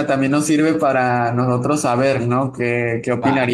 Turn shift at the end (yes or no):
no